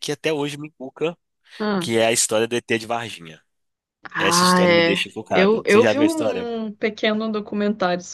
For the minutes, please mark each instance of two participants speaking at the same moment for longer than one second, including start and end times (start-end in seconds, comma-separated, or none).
4.2-6.5